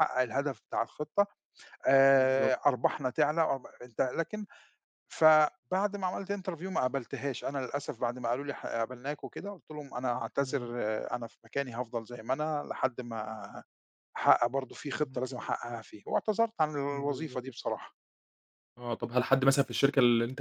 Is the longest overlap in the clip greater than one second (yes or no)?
no